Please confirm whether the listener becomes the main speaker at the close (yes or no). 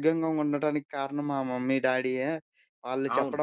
no